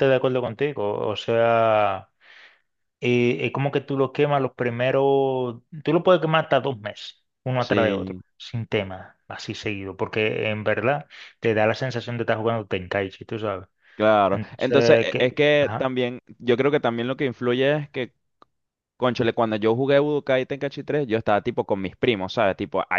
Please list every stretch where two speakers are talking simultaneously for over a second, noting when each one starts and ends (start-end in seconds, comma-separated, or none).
14.3-15.9